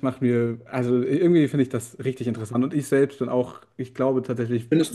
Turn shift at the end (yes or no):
yes